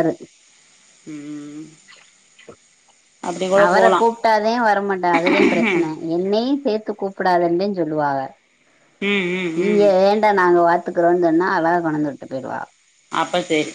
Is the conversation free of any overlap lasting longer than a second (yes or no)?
yes